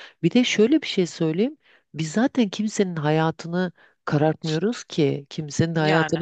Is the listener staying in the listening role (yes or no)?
yes